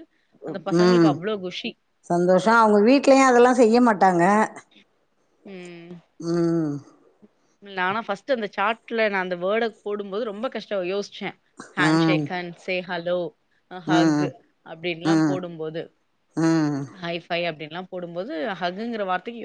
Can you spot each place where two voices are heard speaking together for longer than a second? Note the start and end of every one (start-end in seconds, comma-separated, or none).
none